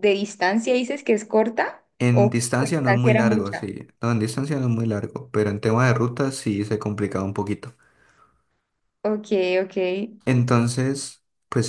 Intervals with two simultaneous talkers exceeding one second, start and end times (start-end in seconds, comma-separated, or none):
2.0-3.7